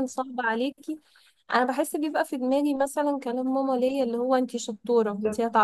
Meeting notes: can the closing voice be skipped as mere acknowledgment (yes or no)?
yes